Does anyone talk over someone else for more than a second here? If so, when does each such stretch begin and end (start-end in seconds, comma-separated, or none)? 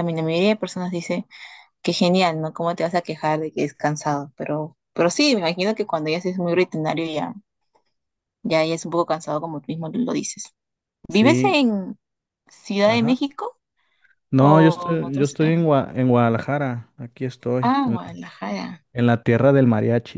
14.4-15.6